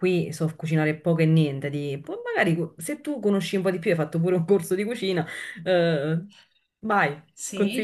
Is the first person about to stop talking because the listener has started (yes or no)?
yes